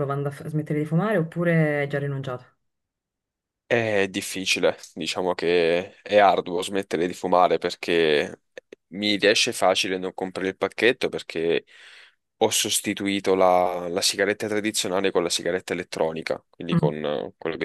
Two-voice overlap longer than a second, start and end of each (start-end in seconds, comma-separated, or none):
none